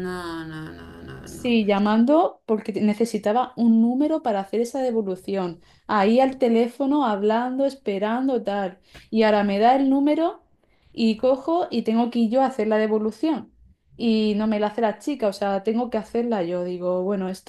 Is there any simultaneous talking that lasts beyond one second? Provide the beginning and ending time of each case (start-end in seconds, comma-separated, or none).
none